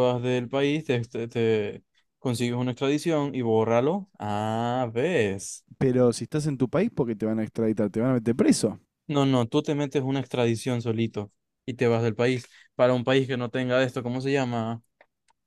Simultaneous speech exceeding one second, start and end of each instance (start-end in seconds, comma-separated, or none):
none